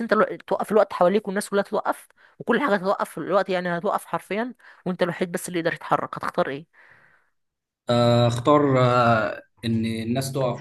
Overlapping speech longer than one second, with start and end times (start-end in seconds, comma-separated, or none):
none